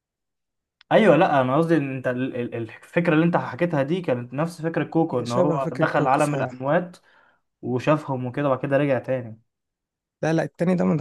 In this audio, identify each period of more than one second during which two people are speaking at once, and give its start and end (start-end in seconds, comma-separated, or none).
5.1-6.5